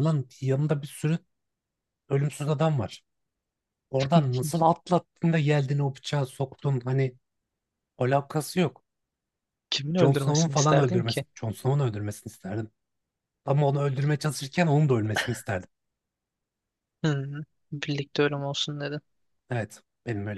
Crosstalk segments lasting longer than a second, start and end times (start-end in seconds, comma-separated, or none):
10.0-11.2